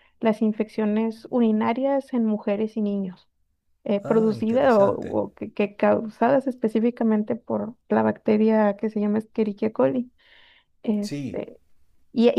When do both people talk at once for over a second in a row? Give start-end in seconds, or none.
4.0-5.2